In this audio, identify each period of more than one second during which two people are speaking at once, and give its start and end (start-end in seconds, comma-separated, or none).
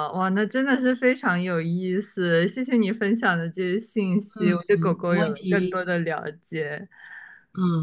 4.3-5.9